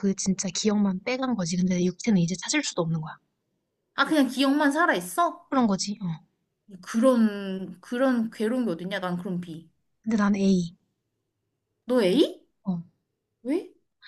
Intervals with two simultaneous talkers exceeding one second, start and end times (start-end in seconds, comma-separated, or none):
none